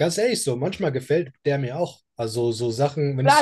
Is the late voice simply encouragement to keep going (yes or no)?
no